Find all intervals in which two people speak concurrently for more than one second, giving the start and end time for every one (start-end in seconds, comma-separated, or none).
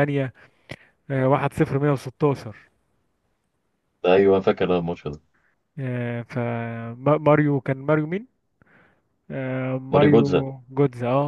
none